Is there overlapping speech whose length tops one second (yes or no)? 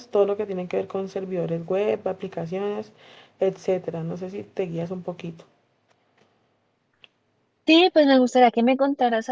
no